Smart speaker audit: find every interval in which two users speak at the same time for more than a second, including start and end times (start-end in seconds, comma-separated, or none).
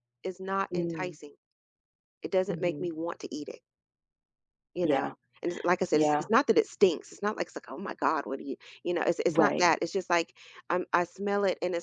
none